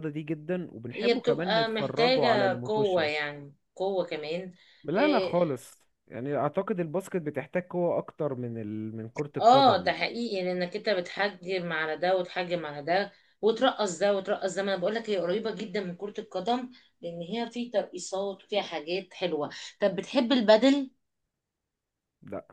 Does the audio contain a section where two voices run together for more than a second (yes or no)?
yes